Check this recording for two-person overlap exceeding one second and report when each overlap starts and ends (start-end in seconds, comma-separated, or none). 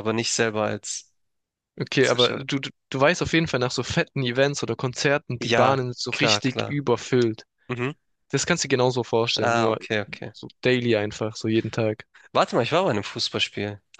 5.4-6.8